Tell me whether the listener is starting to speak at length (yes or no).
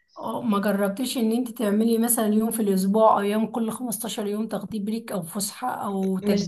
yes